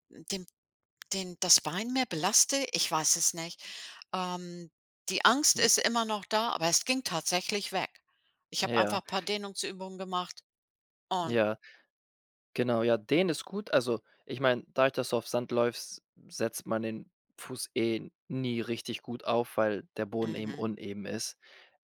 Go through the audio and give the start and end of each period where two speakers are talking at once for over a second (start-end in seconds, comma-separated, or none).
none